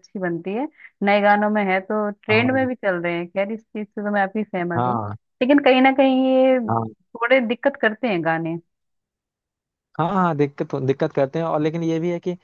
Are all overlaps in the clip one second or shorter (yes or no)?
yes